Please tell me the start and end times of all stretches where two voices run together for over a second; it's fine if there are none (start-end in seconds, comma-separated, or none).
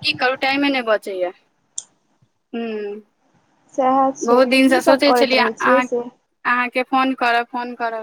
4.3-6.0